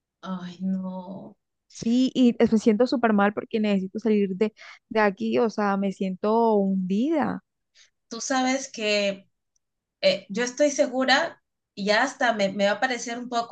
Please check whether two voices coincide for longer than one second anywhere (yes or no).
no